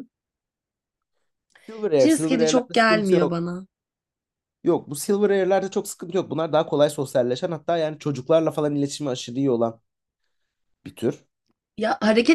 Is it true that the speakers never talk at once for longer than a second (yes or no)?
no